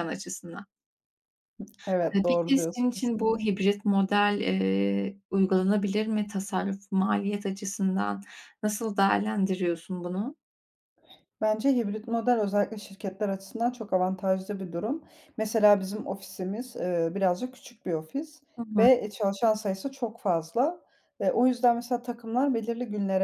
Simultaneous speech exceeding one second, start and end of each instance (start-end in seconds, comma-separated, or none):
2.1-3.4